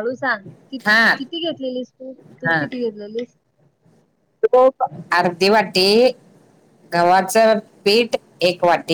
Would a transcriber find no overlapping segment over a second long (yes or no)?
yes